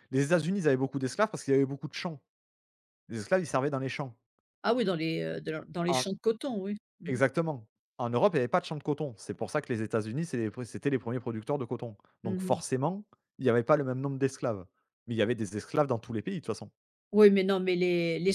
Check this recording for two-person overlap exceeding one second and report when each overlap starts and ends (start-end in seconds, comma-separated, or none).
none